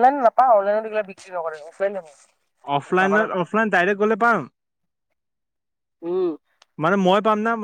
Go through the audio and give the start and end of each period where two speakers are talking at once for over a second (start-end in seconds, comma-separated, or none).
none